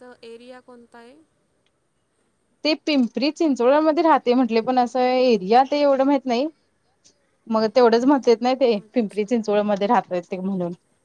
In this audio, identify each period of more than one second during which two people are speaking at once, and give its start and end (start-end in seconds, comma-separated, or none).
none